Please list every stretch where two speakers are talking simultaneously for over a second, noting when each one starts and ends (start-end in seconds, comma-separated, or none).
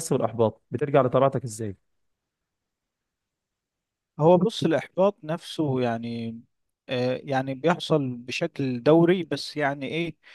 none